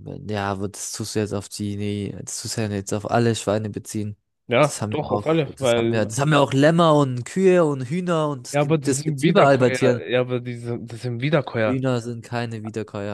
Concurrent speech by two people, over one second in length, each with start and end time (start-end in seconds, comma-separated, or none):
4.6-6.1, 8.5-10.1